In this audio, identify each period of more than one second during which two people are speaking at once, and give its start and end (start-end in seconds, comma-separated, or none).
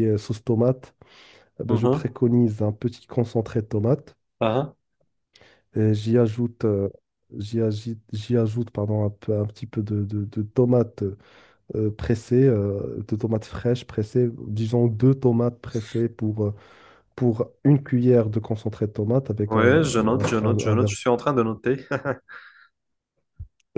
19.5-20.9